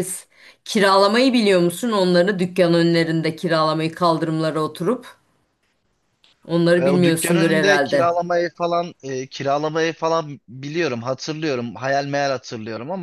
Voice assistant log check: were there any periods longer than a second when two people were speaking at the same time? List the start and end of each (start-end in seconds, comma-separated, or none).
6.8-8.1